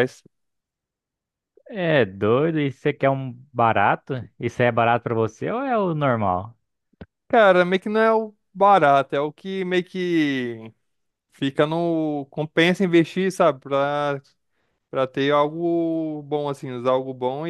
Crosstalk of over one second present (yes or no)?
no